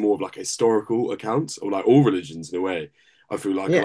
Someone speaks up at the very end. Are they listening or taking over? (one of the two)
listening